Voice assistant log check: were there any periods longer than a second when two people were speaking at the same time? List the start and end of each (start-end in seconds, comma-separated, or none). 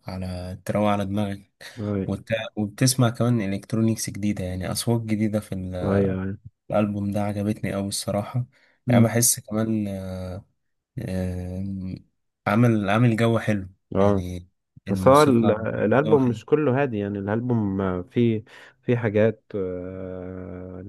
14.9-16.4